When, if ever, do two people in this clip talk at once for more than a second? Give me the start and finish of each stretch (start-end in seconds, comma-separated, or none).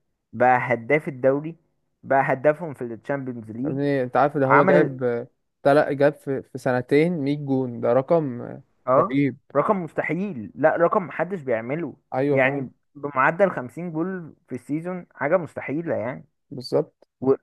none